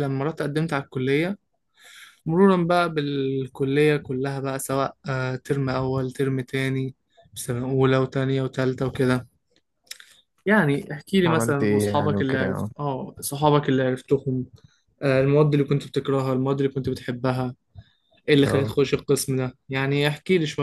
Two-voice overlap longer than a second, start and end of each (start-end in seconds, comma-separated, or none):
11.3-12.7